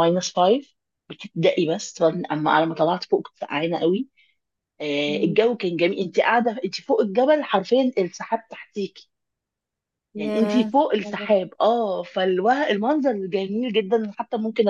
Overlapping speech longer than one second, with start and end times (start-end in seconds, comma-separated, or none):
10.2-11.5